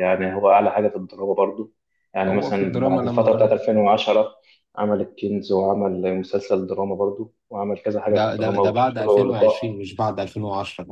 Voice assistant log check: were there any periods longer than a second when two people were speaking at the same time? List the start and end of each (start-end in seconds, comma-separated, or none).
2.3-3.5, 8.1-9.6